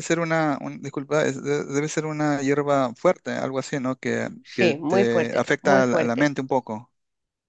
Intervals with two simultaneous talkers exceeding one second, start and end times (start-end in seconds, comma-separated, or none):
4.4-6.3